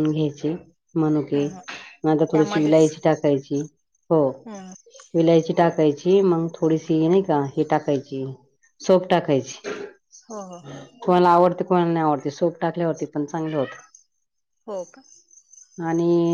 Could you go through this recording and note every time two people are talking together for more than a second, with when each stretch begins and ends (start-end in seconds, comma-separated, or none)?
none